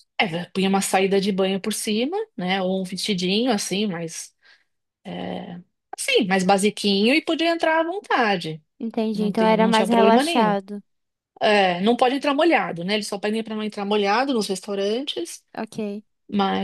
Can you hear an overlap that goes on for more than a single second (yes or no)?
yes